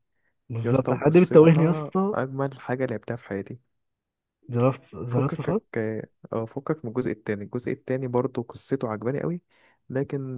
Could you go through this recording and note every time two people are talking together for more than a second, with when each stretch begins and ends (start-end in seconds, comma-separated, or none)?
0.6-2.1